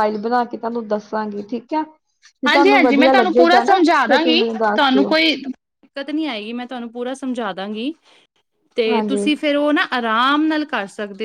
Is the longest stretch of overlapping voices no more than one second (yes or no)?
no